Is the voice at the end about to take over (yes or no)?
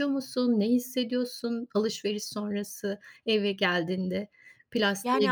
yes